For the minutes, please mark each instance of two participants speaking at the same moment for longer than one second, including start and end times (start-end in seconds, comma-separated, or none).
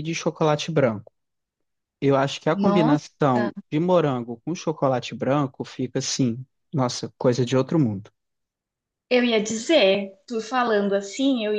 none